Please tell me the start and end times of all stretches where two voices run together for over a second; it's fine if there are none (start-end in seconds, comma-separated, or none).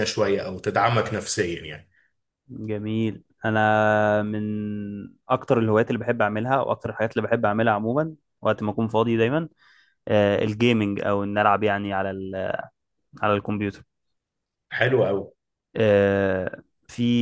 none